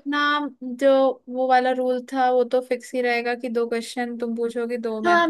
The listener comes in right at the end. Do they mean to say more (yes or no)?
yes